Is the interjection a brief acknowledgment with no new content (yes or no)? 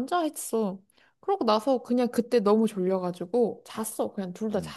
yes